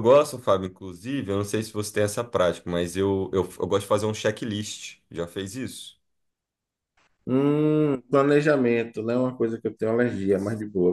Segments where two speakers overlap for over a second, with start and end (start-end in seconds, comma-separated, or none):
none